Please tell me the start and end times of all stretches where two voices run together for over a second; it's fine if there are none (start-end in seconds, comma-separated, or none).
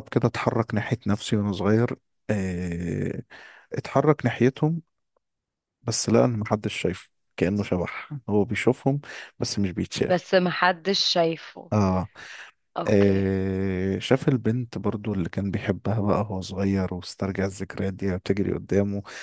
none